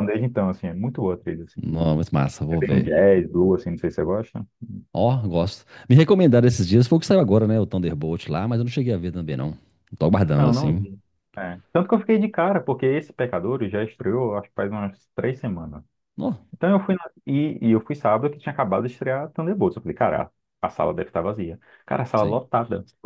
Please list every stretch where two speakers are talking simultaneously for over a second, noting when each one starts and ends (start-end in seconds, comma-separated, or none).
none